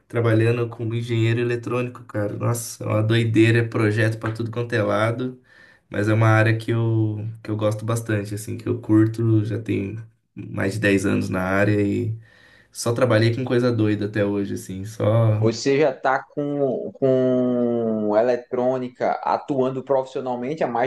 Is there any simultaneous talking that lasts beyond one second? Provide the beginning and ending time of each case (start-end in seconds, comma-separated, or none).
none